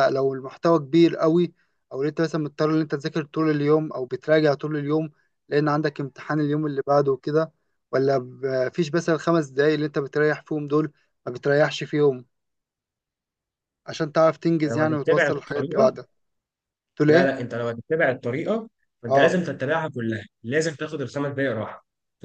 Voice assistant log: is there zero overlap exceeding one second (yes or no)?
no